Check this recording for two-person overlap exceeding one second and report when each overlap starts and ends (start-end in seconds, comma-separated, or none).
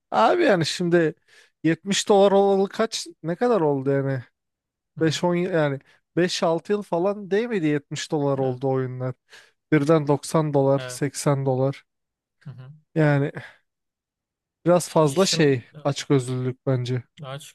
none